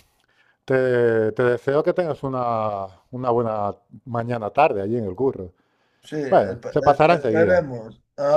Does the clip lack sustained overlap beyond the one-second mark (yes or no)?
no